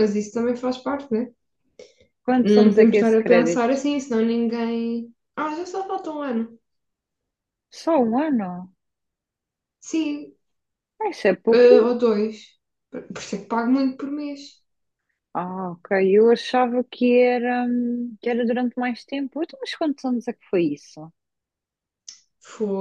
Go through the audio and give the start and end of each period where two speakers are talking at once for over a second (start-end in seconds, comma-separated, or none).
2.4-3.8